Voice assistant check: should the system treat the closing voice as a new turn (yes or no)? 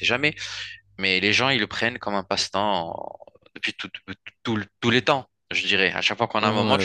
yes